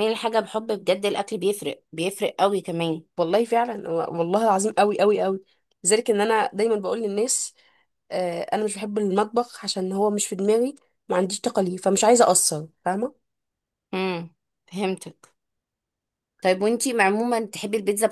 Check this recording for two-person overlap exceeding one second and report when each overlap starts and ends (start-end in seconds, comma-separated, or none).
none